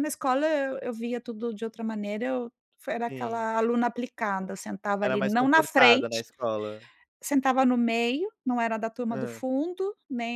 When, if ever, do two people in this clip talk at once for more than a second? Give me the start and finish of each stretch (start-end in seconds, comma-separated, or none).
5.0-6.2